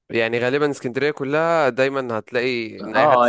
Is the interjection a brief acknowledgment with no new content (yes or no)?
no